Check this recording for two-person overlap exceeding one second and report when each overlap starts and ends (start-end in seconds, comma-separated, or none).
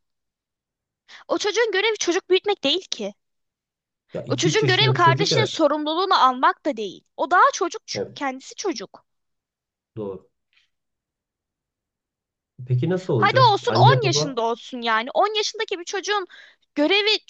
4.3-5.5, 13.2-14.4